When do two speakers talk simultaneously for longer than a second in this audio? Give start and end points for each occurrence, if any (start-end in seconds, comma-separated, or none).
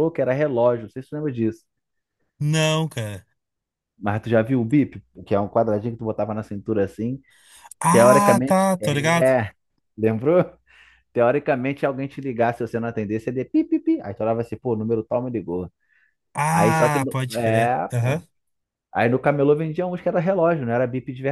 7.9-9.3, 16.5-18.2